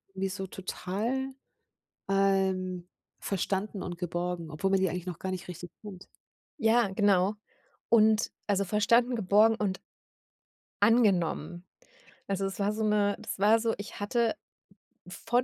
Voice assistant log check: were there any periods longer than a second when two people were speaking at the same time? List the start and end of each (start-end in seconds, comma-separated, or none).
none